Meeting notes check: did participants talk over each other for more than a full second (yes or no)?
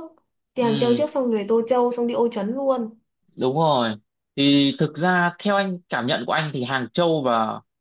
no